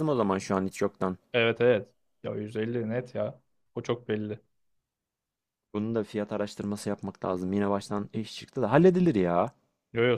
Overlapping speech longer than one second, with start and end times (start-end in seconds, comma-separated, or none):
none